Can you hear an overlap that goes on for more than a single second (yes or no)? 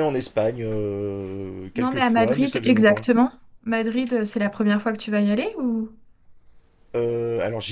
yes